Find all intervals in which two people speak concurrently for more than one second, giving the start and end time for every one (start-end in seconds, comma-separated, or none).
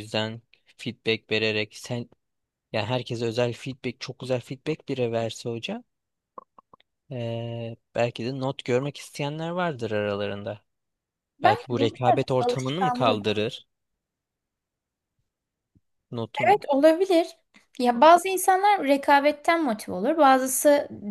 11.4-13.2